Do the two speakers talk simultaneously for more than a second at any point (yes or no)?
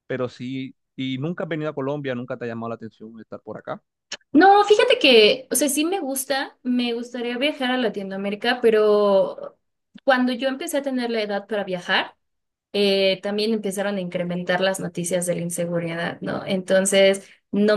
no